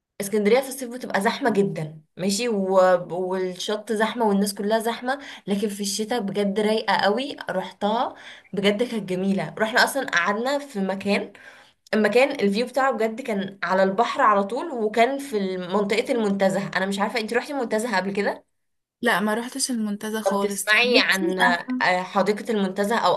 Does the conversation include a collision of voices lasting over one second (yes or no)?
yes